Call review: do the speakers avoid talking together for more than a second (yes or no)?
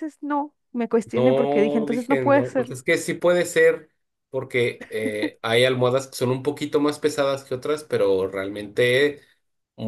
no